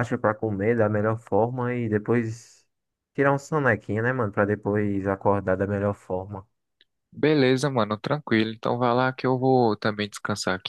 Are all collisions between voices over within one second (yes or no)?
yes